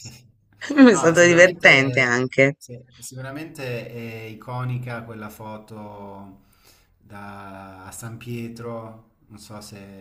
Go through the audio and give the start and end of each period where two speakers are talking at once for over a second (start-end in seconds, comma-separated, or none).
0.9-2.5